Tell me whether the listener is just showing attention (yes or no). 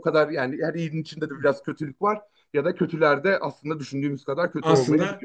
no